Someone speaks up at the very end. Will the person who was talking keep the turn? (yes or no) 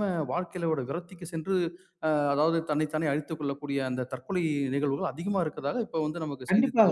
no